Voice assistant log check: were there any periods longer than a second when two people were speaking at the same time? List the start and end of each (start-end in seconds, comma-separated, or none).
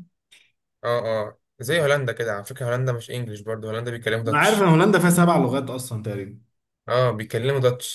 none